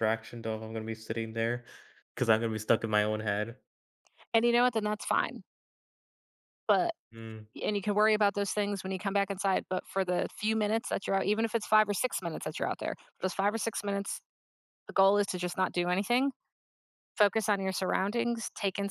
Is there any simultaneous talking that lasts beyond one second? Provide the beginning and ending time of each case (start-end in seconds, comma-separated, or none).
none